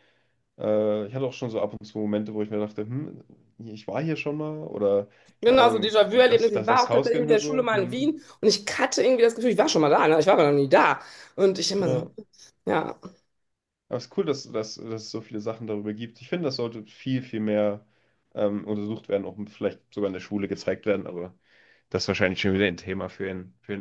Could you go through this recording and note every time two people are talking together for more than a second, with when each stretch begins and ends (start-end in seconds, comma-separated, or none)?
5.4-8.1